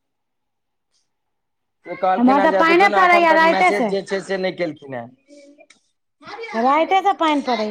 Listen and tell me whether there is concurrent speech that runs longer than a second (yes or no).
yes